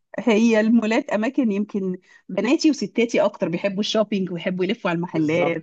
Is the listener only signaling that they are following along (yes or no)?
no